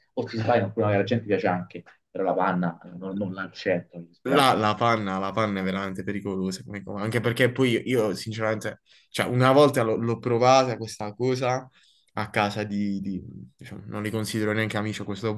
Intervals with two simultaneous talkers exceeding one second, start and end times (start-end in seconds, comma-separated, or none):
none